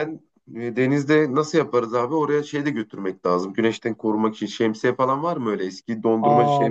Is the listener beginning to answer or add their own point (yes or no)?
yes